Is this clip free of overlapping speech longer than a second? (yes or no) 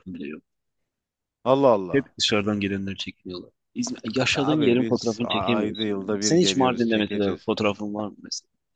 no